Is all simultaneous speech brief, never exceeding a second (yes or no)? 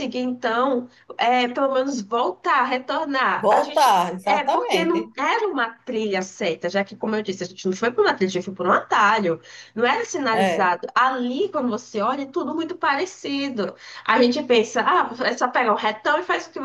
no